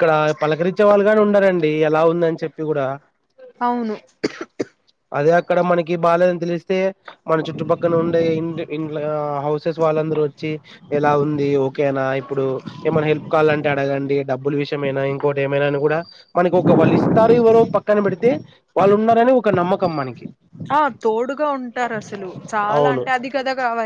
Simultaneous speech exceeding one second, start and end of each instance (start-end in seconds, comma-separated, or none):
none